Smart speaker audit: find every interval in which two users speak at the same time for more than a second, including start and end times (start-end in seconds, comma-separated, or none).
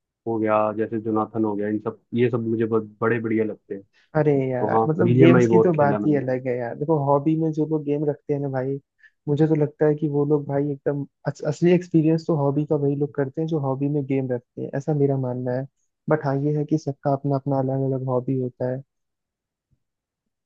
4.6-6.2